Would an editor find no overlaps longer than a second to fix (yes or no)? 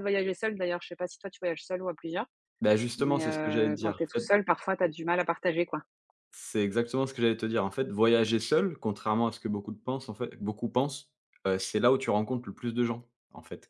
no